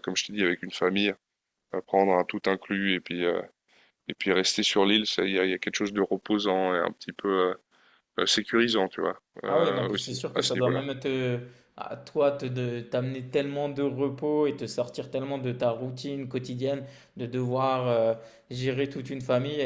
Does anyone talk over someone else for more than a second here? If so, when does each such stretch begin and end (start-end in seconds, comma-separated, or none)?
9.4-10.8